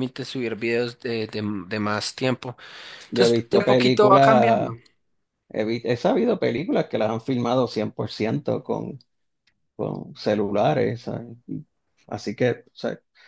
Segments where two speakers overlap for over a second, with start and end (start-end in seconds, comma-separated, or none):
3.1-4.7